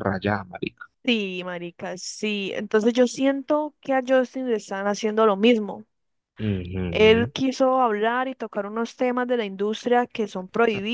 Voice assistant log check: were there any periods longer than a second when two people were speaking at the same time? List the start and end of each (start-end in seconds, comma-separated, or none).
none